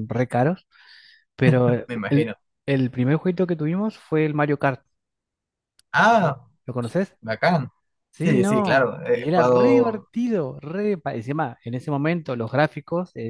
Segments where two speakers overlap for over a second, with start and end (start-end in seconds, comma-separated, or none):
8.2-10.1